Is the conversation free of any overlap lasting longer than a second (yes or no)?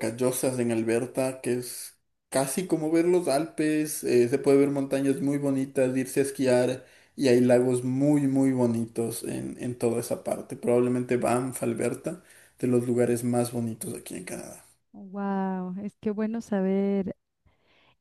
yes